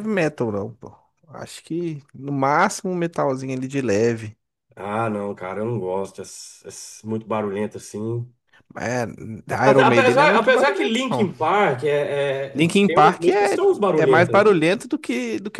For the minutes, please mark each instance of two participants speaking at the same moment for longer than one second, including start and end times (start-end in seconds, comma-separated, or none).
9.7-11.3, 12.5-14.6